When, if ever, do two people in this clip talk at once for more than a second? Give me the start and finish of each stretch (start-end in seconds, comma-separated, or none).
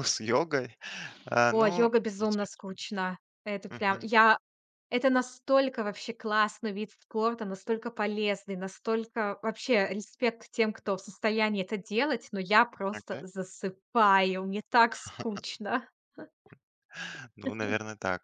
1.5-2.8